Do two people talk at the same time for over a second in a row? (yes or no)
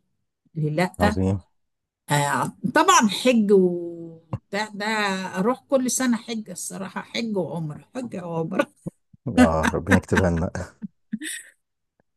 no